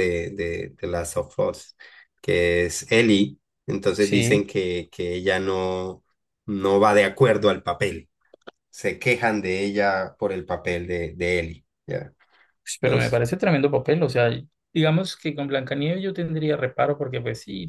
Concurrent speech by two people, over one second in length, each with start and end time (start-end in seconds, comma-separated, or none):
none